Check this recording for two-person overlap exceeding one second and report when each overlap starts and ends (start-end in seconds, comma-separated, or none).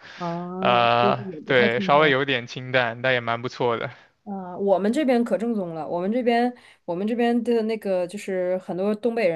0.6-2.1